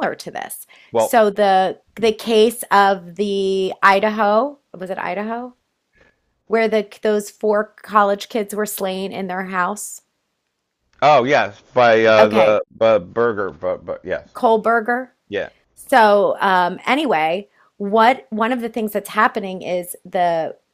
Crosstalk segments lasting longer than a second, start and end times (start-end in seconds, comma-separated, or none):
none